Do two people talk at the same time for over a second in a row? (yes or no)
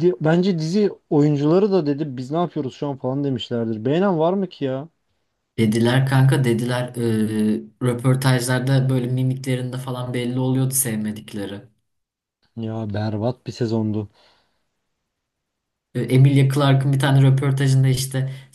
no